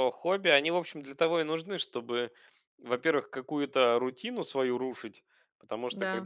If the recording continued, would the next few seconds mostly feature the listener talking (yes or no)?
no